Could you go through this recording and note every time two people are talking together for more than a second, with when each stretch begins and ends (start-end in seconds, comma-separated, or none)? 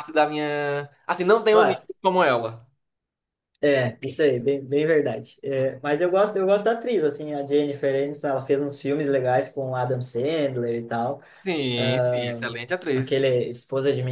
none